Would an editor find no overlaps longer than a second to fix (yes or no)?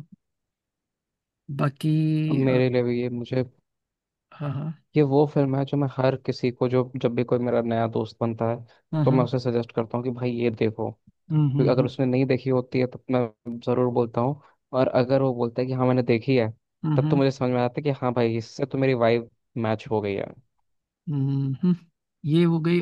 yes